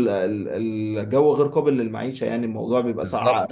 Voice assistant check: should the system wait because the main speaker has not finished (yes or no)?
no